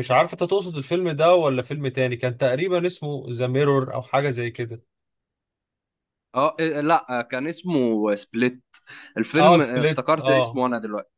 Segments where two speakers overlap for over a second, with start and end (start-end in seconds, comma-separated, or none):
9.4-10.6